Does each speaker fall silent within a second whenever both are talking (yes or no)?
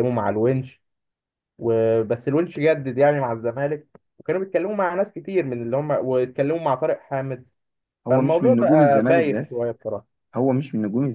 no